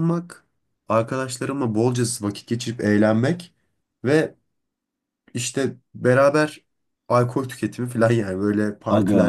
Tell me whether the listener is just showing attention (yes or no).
no